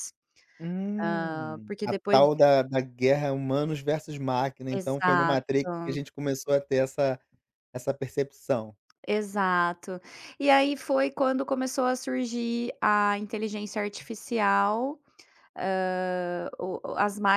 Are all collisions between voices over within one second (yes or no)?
no